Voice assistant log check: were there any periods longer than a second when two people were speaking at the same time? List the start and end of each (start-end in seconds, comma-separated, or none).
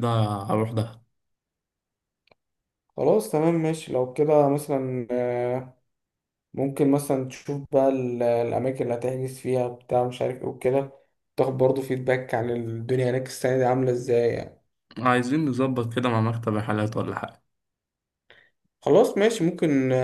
none